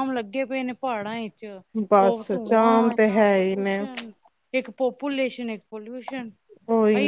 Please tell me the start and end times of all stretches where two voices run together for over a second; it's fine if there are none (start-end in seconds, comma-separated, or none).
2.0-3.8